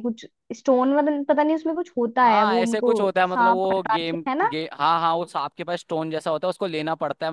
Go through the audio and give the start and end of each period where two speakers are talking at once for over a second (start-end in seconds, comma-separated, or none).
2.2-4.5